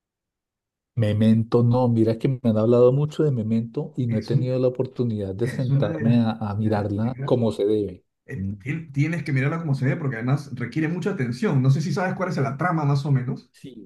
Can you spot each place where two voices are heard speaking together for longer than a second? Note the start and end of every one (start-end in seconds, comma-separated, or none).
5.4-7.4